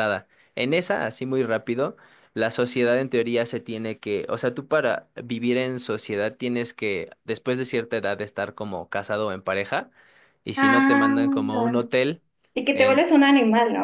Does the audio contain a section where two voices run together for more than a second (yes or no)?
yes